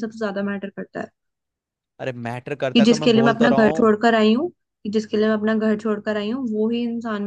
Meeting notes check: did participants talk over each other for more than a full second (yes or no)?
yes